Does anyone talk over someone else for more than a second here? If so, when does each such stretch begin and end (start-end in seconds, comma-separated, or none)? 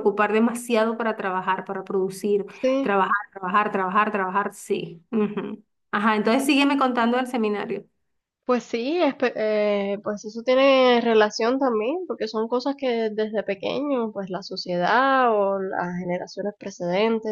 none